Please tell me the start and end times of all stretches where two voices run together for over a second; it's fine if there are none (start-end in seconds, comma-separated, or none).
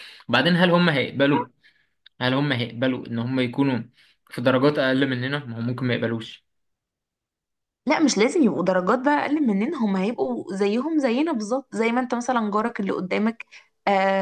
none